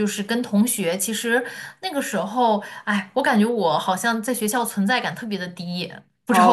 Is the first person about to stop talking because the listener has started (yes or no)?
yes